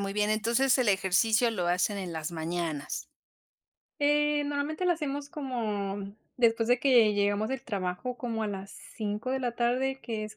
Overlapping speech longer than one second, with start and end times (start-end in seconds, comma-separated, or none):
none